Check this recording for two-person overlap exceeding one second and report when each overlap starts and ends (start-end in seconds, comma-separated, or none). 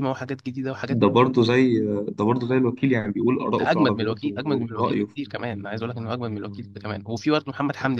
3.6-5.2